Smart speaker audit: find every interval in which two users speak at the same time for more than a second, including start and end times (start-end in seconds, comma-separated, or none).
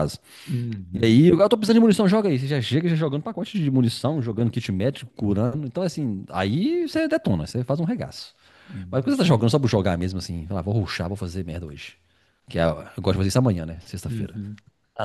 none